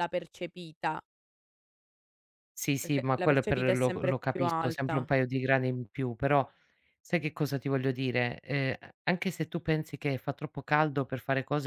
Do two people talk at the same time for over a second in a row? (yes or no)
yes